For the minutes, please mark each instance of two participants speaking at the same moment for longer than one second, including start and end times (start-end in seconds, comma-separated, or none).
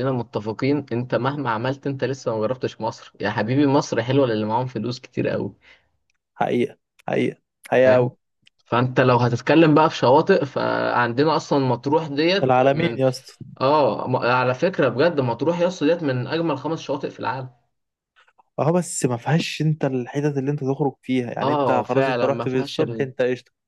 21.4-23.1